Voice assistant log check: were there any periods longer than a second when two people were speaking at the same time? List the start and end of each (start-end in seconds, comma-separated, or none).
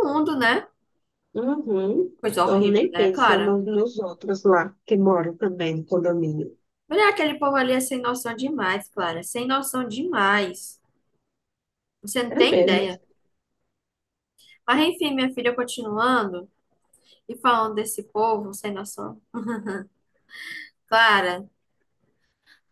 2.2-3.6